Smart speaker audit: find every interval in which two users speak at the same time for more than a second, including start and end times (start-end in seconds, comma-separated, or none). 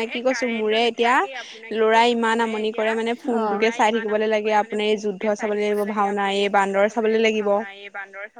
4.4-7.2